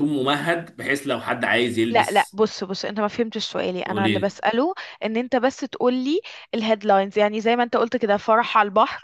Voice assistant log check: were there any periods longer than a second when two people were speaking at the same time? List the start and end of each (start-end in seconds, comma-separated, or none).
none